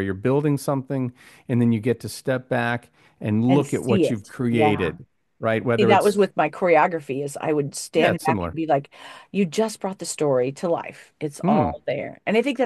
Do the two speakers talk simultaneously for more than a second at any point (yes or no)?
yes